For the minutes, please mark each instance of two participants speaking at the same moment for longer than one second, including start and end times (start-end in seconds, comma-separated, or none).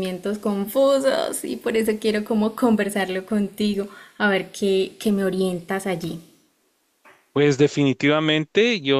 none